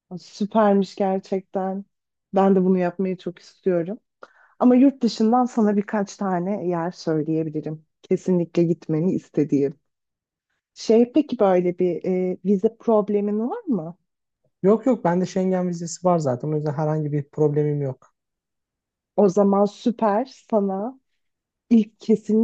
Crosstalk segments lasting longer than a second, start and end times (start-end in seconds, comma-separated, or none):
none